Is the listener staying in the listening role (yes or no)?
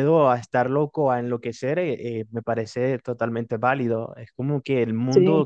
yes